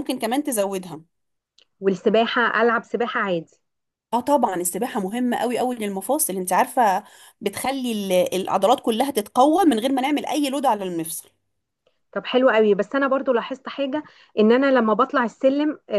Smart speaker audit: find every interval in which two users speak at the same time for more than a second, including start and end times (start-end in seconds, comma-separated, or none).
none